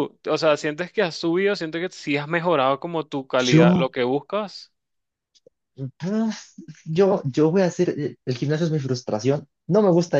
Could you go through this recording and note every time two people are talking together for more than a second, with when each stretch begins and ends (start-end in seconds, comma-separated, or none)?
none